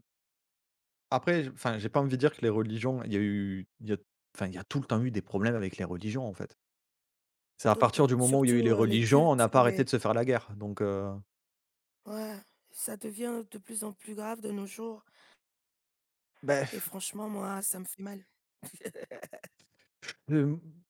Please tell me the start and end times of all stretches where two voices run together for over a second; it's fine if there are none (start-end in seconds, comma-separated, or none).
7.7-9.9